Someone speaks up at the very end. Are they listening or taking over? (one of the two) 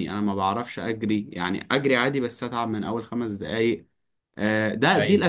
listening